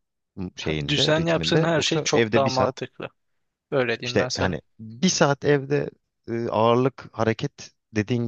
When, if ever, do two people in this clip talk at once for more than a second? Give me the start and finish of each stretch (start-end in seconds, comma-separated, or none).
0.9-2.7